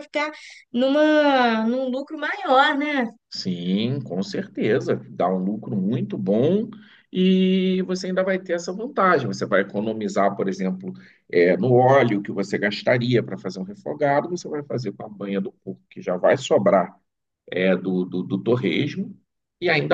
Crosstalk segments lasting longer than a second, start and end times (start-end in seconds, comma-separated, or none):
none